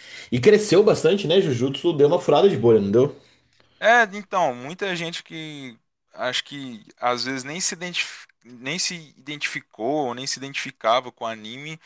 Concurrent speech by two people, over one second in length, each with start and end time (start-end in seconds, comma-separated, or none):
none